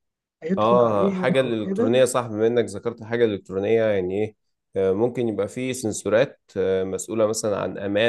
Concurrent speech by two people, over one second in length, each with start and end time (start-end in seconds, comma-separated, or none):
0.6-1.9